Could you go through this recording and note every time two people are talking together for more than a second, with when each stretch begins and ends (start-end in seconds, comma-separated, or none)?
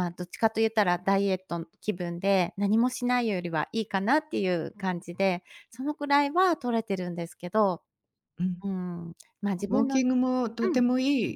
none